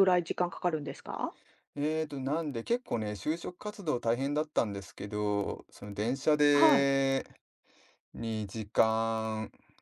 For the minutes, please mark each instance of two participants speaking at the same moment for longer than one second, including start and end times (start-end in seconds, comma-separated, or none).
none